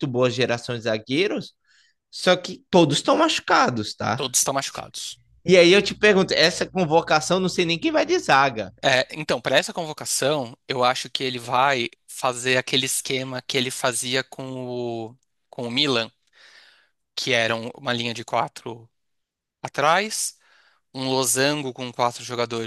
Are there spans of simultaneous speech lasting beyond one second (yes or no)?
no